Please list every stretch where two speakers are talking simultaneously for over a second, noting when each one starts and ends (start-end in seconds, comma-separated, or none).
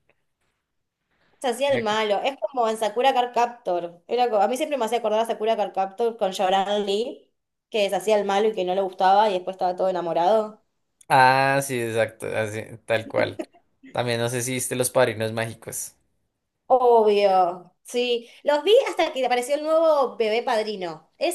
none